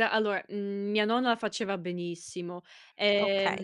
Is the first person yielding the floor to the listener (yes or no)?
no